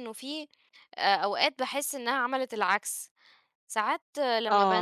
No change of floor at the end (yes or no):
no